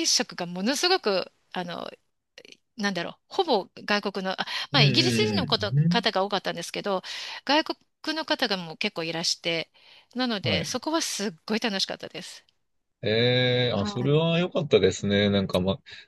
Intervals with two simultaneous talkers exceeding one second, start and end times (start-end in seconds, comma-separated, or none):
4.7-6.1